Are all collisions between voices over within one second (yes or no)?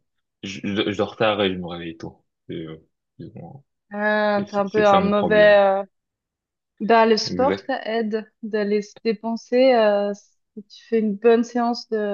no